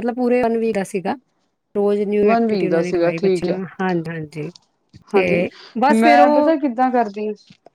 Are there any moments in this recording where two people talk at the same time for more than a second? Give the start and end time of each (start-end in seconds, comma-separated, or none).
2.2-3.6